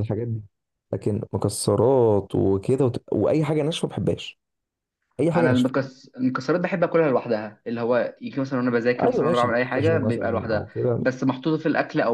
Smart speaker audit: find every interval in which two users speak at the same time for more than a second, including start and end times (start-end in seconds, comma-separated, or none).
9.0-11.0